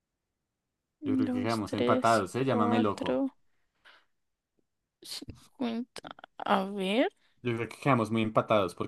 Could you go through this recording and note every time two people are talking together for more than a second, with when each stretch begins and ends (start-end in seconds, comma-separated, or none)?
1.0-3.2